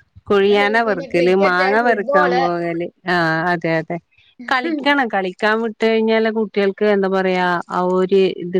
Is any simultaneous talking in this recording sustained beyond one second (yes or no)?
yes